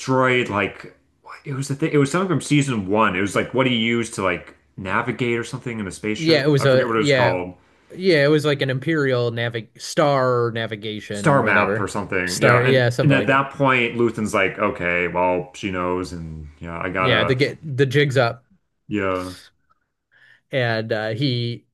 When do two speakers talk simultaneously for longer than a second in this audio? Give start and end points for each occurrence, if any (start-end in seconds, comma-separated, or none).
6.2-7.4, 11.1-13.4